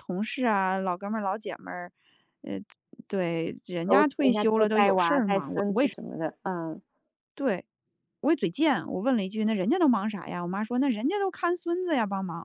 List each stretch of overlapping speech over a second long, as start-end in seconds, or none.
3.9-6.0